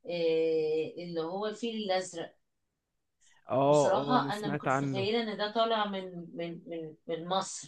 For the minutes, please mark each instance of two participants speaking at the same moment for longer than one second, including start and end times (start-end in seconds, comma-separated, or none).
3.6-5.1